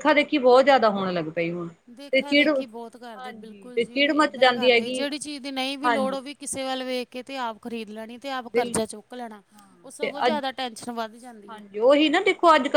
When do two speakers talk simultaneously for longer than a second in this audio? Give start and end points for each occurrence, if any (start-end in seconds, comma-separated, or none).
2.1-5.0